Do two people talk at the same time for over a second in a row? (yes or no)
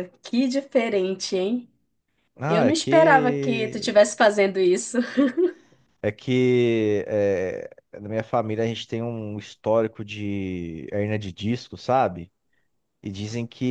yes